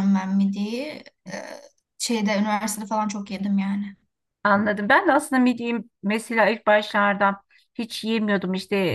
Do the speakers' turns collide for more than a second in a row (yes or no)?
no